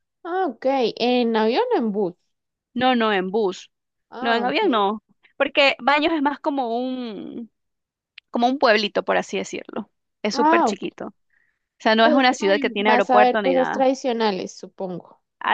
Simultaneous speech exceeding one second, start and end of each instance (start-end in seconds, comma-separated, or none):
12.0-13.9